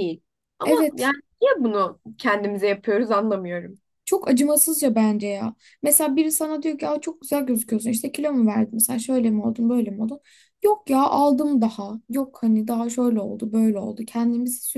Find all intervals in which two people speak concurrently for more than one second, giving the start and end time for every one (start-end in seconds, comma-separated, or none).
none